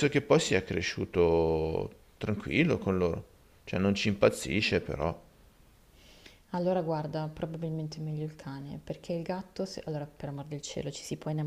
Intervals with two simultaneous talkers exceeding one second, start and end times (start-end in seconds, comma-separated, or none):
none